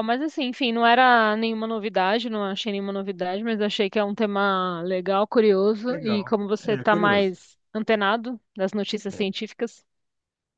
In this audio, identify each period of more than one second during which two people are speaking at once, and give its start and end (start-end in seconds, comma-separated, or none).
5.9-7.4